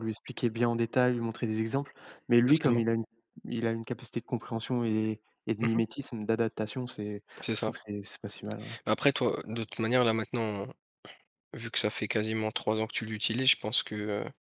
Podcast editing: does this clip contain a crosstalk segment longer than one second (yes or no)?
no